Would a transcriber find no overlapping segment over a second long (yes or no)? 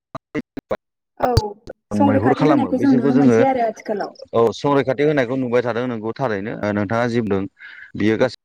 no